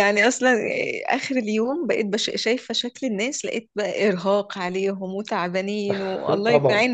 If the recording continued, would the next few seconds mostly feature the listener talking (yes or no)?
yes